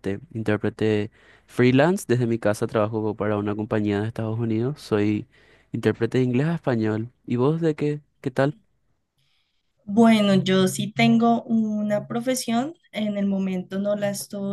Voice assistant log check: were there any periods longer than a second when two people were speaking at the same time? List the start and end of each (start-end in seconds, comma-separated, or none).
none